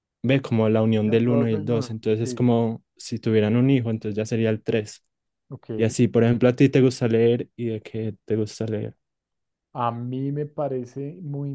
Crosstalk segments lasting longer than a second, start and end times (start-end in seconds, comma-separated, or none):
1.0-2.5